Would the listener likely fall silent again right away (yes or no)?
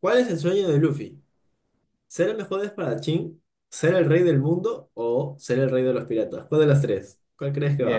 no